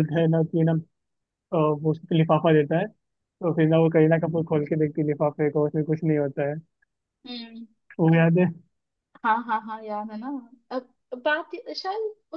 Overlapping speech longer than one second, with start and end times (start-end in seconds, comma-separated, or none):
none